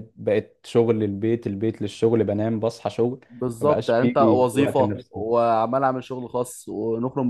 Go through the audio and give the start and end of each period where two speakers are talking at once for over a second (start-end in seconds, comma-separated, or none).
3.6-5.2